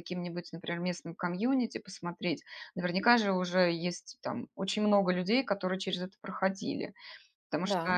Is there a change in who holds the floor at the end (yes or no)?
no